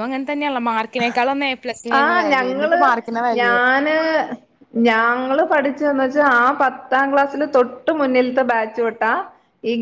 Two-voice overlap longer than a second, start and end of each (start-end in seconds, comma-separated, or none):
none